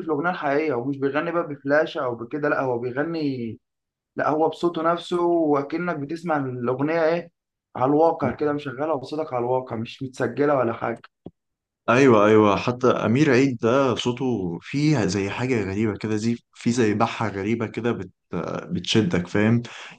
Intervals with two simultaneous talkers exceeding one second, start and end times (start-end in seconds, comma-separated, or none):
none